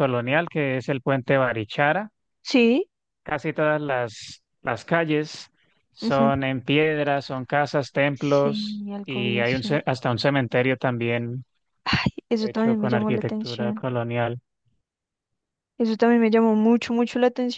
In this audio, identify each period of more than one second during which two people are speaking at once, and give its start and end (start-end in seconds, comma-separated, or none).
8.1-9.8, 12.4-13.8